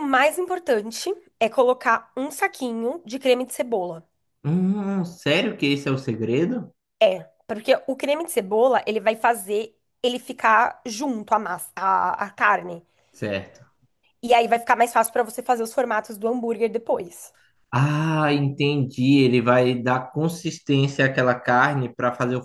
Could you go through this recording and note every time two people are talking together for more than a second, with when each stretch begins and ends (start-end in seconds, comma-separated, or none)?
none